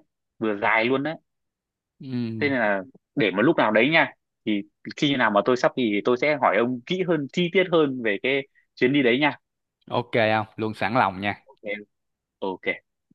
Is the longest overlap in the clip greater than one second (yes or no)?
no